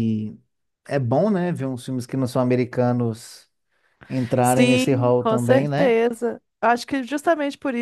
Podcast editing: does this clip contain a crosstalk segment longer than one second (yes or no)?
yes